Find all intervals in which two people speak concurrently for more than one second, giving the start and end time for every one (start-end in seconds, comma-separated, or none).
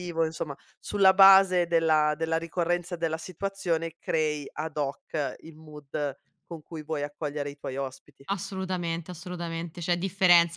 none